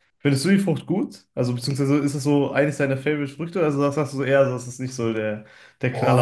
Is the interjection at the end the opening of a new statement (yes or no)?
yes